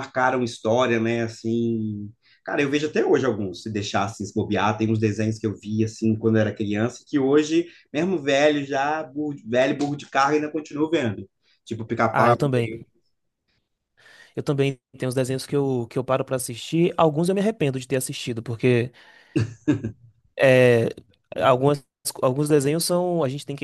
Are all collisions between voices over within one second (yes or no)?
yes